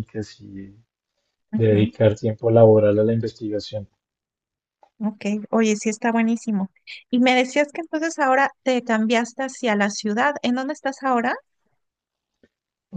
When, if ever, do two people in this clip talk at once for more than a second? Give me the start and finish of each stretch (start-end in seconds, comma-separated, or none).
none